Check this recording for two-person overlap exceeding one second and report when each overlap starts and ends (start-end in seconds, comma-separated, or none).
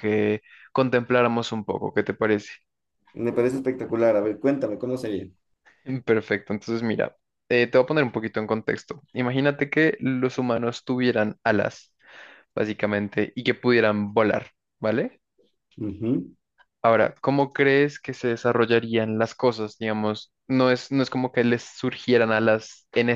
none